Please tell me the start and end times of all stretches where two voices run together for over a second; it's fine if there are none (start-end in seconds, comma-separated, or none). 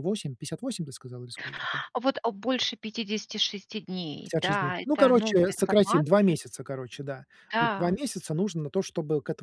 4.2-6.3